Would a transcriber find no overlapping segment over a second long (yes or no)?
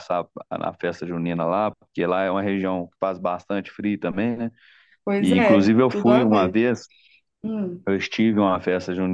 no